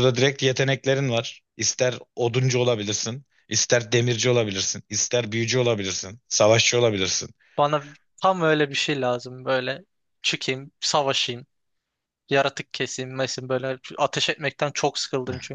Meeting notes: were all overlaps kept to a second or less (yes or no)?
yes